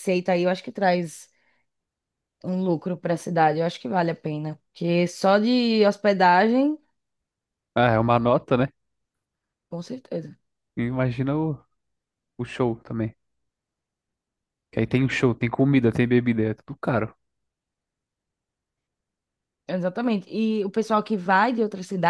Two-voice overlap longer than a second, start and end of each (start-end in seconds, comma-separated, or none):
none